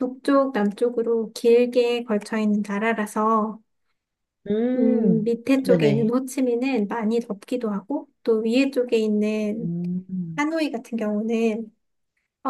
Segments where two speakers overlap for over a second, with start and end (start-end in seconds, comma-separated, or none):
4.8-6.2